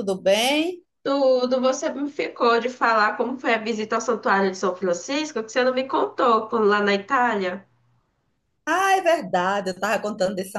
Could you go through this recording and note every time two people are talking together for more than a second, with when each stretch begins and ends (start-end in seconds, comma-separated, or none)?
none